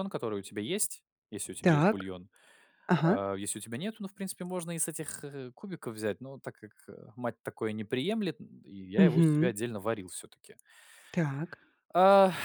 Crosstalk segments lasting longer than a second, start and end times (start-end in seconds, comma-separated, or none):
none